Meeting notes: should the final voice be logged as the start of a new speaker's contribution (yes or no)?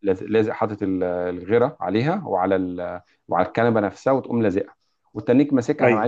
no